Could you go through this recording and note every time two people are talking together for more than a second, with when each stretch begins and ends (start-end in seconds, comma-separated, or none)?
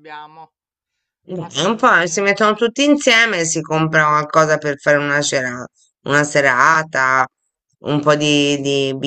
1.4-2.7